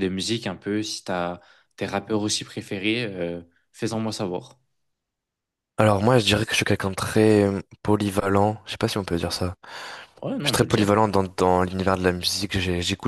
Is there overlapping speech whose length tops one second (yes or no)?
no